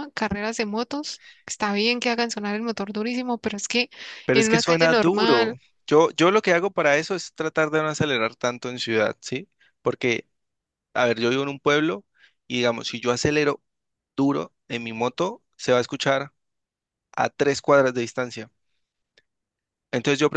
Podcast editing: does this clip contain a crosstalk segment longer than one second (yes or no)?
yes